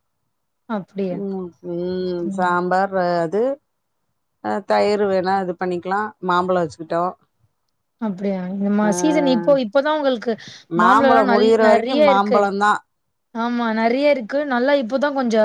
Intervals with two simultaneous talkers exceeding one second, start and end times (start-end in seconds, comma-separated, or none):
10.8-12.4